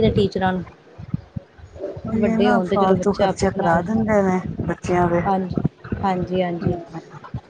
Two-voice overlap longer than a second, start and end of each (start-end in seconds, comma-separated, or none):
2.2-3.8